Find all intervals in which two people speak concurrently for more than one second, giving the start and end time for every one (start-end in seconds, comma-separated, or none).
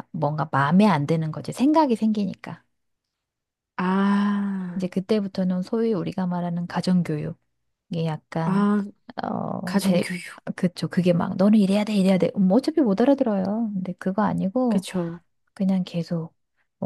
none